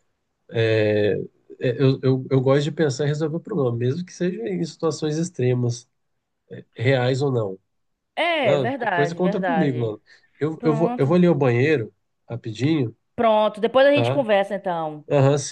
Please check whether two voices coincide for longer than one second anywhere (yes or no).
yes